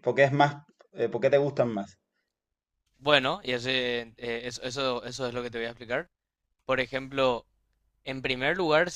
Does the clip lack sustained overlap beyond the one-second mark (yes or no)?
yes